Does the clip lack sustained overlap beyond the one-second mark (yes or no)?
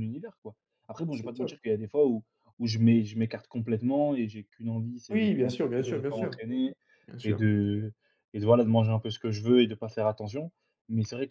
no